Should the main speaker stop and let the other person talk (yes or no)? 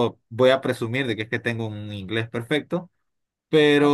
yes